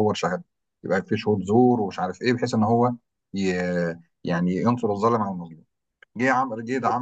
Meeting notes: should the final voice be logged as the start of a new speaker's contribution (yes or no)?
no